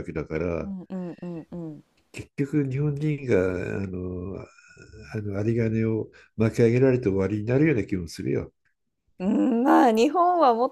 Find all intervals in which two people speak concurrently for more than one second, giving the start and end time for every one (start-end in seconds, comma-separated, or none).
none